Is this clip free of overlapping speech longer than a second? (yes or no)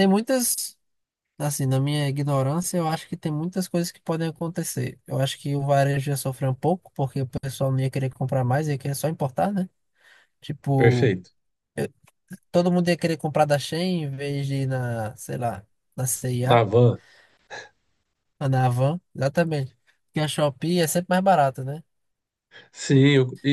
yes